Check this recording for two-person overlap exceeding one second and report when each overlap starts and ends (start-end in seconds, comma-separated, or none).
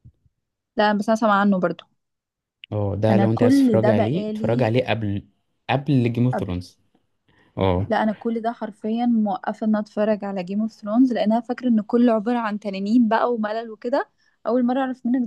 3.1-4.7